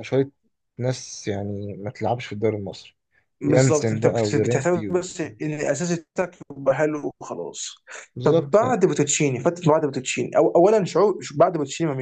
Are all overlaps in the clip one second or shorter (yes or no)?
no